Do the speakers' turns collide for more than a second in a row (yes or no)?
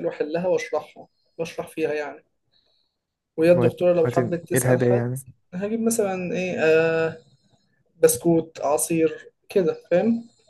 yes